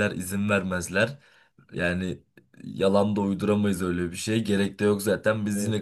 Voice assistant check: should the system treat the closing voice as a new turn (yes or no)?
no